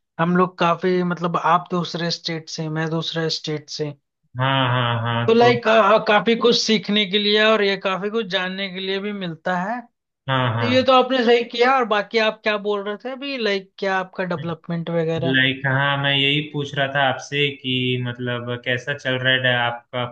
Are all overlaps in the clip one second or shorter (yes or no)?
yes